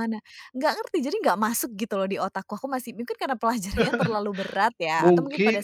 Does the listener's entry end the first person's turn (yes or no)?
yes